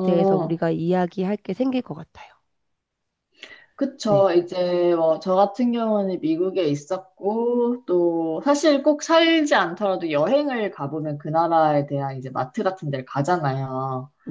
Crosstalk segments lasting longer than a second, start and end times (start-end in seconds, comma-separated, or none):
none